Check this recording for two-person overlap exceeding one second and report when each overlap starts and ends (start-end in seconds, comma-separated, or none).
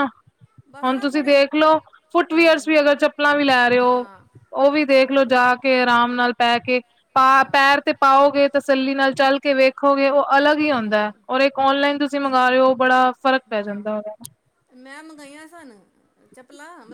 none